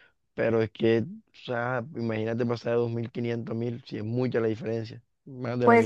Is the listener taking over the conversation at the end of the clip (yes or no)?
yes